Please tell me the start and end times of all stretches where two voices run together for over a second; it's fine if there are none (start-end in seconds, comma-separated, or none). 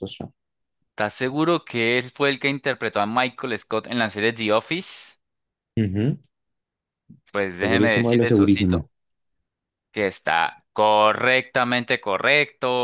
7.6-8.9